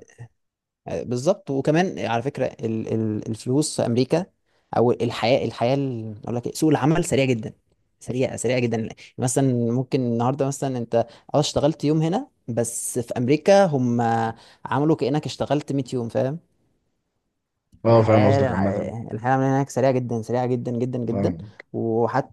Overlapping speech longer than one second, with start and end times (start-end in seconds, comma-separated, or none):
none